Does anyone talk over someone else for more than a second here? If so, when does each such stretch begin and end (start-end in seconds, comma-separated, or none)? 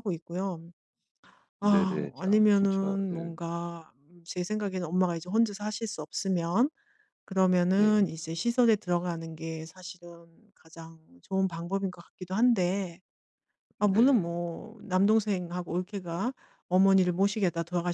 1.6-3.3